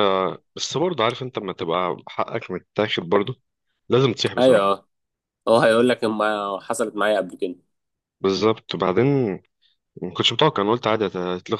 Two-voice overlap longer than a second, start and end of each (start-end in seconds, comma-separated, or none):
none